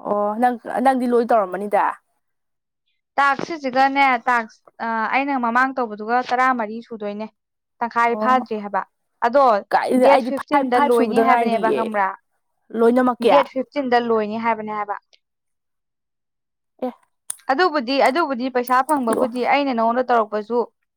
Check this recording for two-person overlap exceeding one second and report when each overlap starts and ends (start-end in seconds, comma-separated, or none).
10.1-11.8